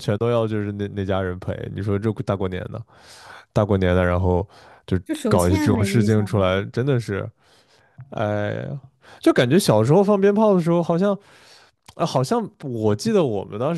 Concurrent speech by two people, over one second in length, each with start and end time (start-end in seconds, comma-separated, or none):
5.0-6.7